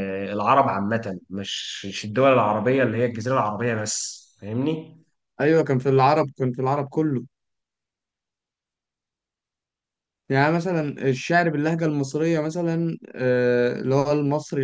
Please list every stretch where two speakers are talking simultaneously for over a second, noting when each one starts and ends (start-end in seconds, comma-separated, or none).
none